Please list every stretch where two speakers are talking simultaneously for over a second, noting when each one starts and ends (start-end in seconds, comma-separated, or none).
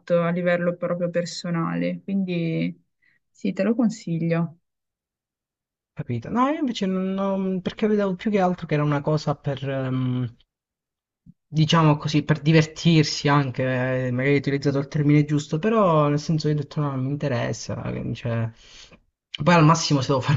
none